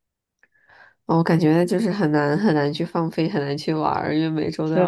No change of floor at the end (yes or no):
no